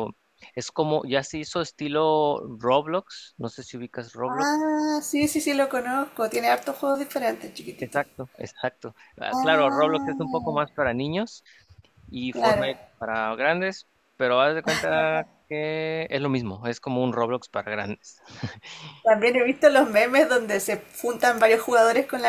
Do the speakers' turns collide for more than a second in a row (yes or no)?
yes